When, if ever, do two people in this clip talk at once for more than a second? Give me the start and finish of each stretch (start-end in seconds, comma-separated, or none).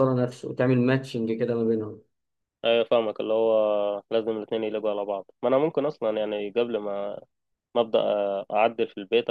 none